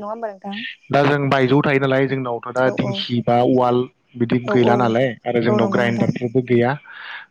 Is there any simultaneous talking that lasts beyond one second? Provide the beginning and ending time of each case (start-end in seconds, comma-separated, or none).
4.5-6.1